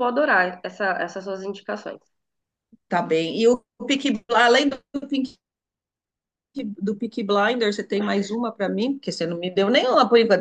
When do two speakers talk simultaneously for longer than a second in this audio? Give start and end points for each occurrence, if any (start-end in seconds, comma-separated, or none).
none